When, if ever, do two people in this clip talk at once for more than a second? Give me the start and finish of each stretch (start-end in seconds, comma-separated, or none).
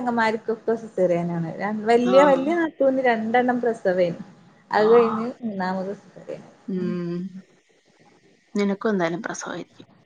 none